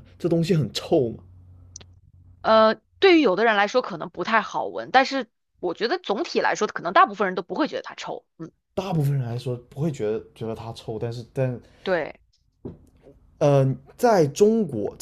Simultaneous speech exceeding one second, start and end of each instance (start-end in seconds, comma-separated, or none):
none